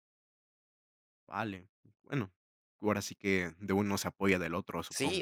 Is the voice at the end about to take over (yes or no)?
yes